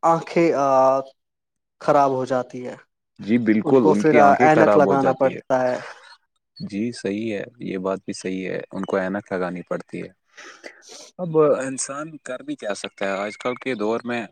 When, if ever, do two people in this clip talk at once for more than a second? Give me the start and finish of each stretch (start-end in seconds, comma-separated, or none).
3.9-5.6